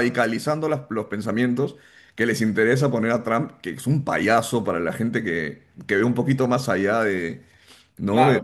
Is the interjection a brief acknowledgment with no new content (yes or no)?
yes